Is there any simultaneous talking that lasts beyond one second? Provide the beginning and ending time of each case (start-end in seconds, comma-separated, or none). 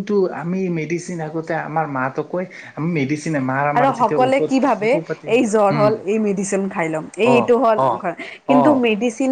none